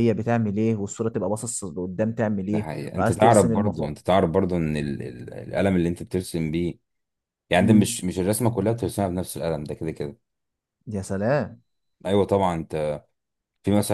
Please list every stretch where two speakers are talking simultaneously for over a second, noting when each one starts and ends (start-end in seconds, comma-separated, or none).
2.5-4.0